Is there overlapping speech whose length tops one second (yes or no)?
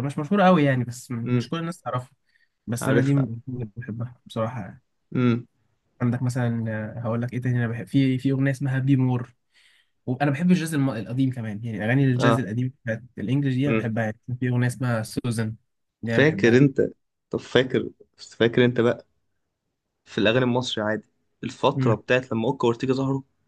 no